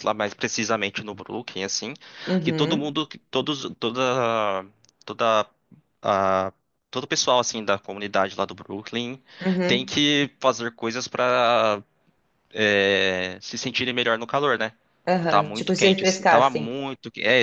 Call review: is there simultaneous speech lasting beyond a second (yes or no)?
yes